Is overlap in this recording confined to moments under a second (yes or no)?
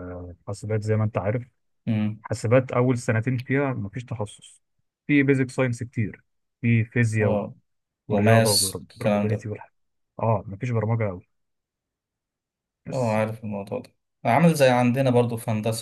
no